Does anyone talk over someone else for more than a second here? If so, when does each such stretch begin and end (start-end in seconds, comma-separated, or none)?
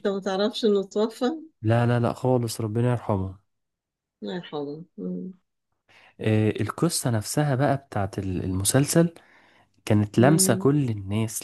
none